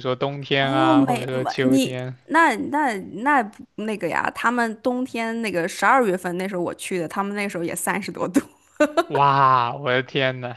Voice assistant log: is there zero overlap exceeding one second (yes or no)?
no